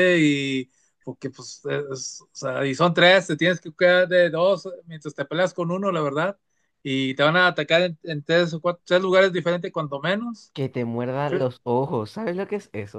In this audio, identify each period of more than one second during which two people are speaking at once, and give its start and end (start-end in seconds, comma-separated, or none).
none